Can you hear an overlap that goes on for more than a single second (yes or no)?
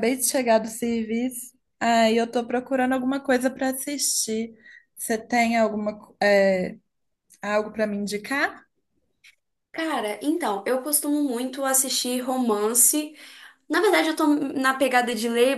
no